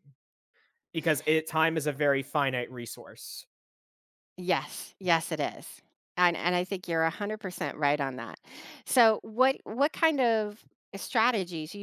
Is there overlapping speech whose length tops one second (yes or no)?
no